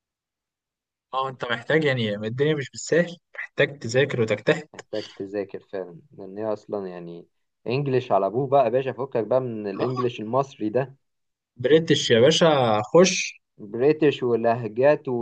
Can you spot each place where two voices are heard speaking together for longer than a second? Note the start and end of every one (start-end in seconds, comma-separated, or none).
none